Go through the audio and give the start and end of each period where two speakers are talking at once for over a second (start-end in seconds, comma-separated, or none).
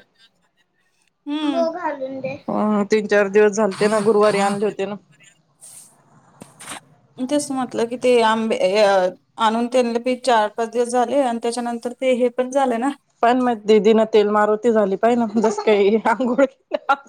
none